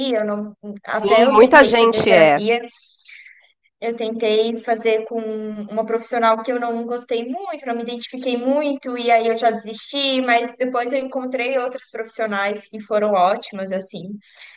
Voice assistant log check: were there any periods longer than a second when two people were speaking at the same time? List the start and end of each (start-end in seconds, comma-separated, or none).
0.9-2.4